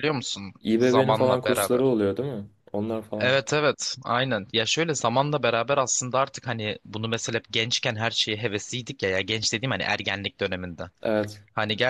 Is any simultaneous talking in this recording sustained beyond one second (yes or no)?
yes